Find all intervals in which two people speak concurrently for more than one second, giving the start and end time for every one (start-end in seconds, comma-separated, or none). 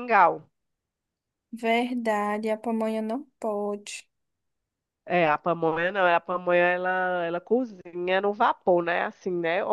none